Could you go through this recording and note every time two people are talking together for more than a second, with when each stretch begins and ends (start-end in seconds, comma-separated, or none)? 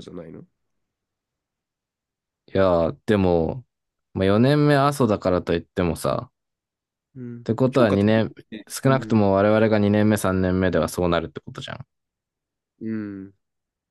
7.2-9.2